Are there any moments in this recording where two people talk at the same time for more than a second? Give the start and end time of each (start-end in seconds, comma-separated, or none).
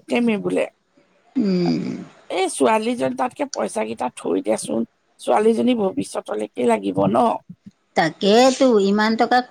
none